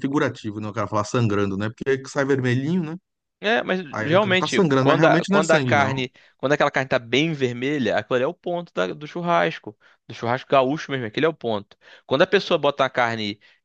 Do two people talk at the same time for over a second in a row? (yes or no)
yes